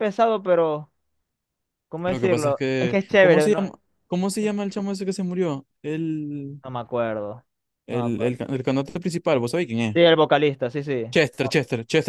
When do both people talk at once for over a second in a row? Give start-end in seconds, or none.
2.0-3.6